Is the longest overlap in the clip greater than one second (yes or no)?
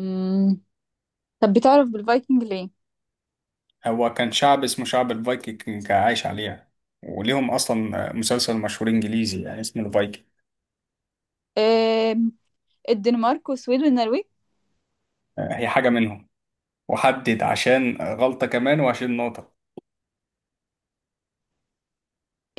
no